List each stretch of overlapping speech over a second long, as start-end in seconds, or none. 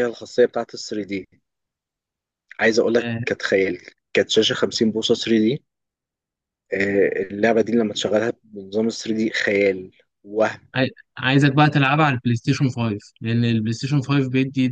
none